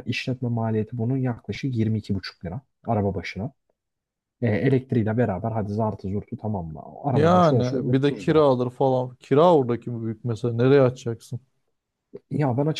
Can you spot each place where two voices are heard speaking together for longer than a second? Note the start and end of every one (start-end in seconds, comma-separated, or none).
7.1-8.4